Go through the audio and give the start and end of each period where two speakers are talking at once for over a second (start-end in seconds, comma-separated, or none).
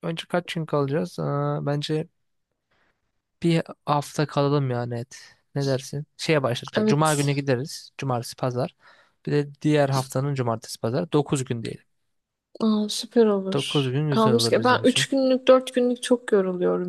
13.5-15.1